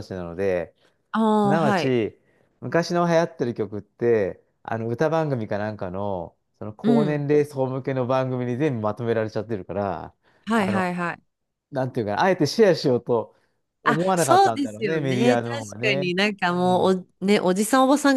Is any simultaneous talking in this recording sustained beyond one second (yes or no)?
yes